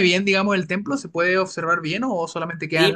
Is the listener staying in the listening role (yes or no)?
no